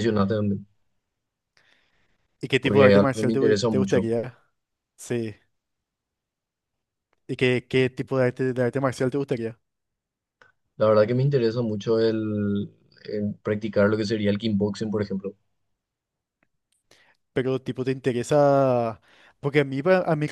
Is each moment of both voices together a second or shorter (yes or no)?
no